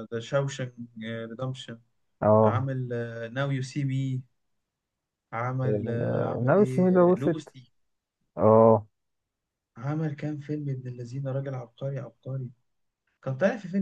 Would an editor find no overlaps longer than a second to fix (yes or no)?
no